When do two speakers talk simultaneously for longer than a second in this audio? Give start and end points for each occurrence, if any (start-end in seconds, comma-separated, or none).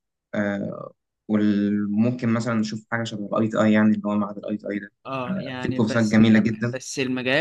5.3-6.8